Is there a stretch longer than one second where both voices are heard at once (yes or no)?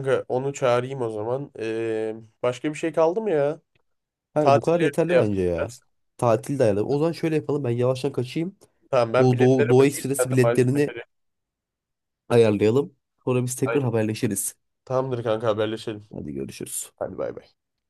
yes